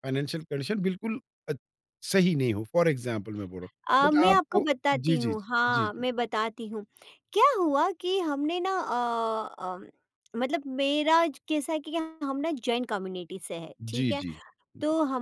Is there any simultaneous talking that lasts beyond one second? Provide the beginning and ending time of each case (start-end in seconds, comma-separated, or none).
3.9-6.0